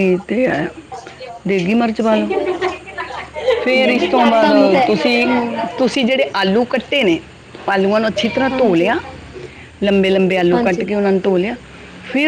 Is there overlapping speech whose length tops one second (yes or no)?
no